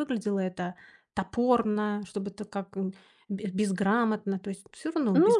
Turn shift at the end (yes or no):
yes